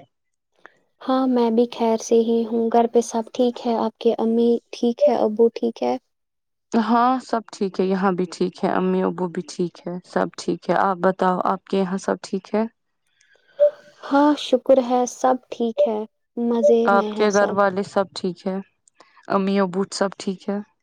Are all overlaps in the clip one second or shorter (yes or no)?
yes